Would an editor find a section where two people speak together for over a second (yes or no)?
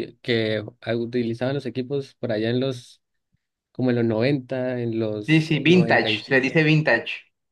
yes